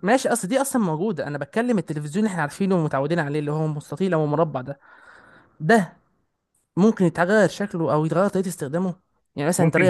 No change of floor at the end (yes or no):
no